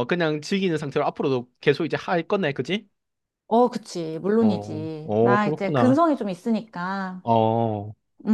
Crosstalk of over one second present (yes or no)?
yes